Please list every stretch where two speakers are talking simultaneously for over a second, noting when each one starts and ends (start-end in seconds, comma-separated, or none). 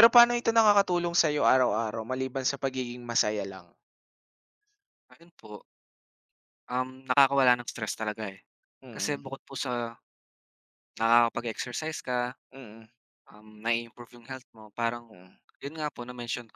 none